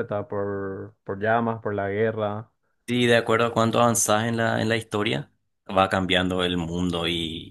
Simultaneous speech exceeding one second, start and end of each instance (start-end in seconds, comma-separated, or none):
none